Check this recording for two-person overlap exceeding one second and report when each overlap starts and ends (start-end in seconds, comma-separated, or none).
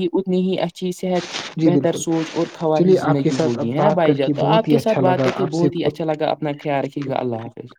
2.7-5.7